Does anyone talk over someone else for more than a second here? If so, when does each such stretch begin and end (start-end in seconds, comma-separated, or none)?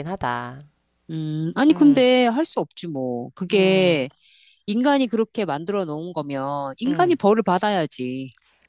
none